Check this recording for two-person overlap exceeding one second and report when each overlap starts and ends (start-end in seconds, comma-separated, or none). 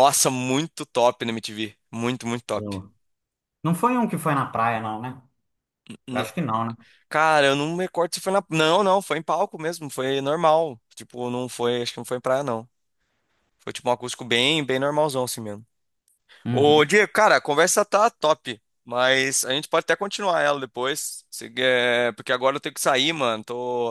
none